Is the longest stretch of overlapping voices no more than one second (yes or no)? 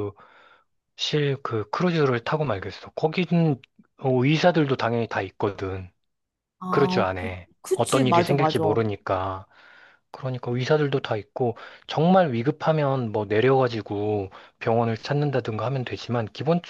no